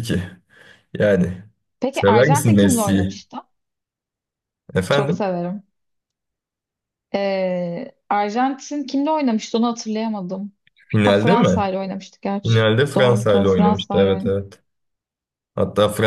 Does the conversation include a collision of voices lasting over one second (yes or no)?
yes